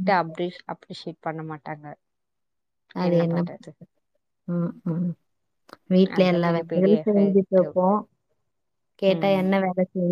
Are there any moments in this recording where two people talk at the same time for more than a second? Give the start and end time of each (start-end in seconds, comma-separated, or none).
6.2-7.6